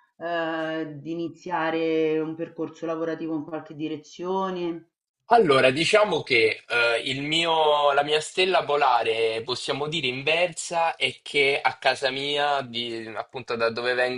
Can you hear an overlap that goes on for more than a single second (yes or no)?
no